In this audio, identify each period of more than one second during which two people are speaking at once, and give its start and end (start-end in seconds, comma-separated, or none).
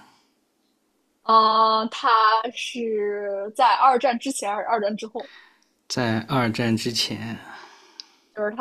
none